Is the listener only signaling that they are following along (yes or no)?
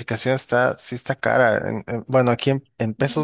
yes